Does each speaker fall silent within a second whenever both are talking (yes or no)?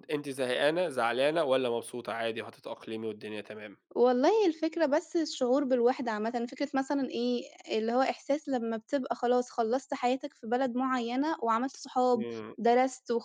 yes